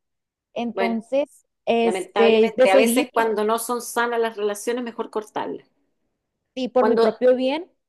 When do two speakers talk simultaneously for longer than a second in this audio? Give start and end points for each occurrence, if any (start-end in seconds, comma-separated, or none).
1.8-3.4